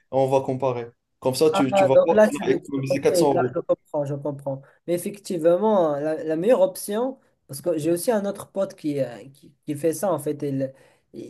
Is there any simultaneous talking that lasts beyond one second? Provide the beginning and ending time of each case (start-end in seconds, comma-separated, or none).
1.7-3.6